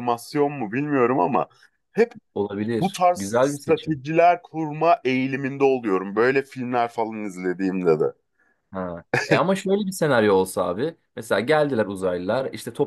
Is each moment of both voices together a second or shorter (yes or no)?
no